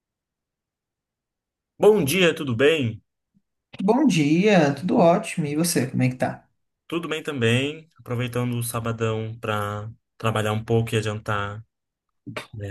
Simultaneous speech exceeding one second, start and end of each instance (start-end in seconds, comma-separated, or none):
none